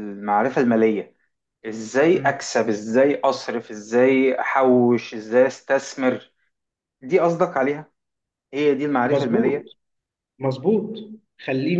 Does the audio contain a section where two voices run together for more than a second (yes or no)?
no